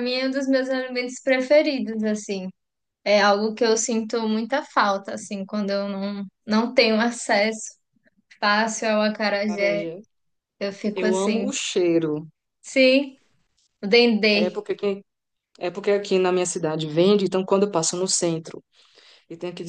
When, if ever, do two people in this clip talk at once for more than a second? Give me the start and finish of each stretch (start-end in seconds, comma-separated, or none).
none